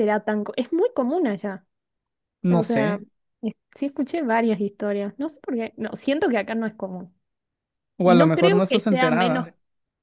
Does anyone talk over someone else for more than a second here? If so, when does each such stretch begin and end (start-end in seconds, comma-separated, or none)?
8.0-9.5